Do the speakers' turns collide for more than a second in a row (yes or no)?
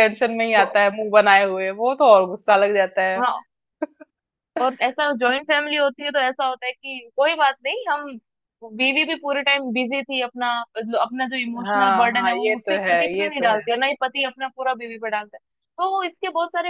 yes